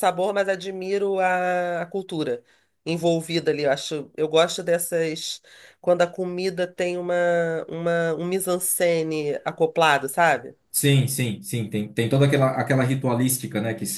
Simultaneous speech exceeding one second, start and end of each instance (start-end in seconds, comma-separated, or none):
none